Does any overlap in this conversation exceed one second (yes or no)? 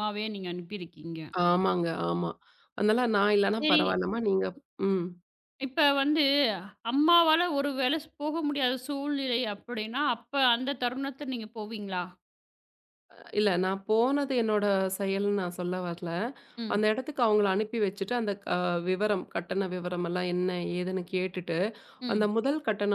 no